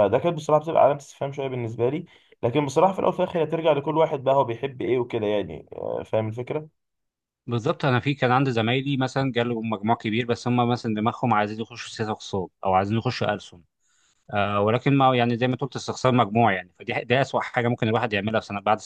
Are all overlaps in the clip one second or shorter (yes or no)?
yes